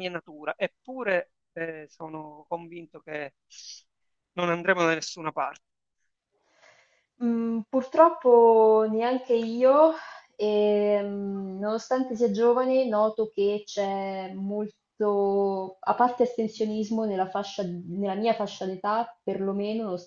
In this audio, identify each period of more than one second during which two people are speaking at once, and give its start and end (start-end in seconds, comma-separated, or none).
none